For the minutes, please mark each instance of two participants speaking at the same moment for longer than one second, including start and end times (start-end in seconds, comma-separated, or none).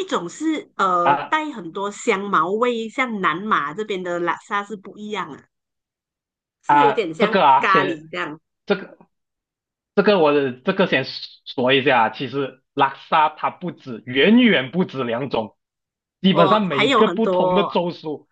6.7-8.1, 16.3-17.8